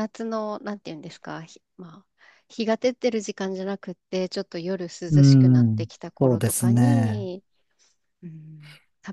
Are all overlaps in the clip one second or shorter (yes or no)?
no